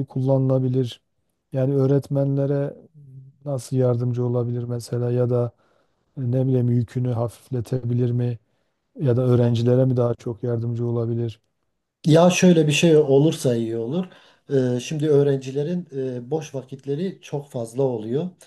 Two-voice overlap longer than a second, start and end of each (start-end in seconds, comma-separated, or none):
none